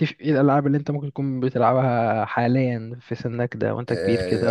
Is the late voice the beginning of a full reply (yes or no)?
yes